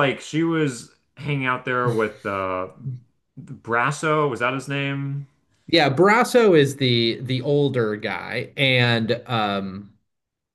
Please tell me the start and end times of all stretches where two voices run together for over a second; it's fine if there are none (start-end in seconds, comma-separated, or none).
none